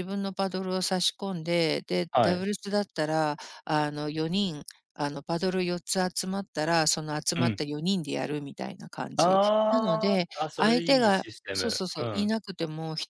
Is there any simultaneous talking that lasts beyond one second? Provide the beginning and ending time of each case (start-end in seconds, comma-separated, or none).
9.2-12.3